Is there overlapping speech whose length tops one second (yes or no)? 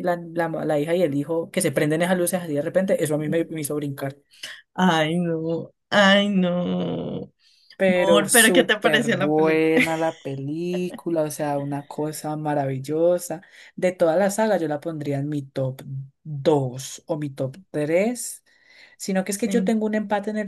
yes